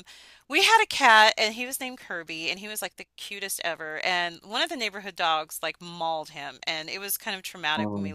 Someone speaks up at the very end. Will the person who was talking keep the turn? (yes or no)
yes